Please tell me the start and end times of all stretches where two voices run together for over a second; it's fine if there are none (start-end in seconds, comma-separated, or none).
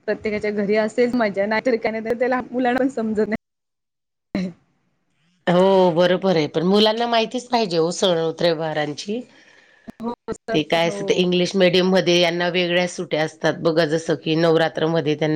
none